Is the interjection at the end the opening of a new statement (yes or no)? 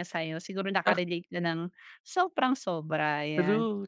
yes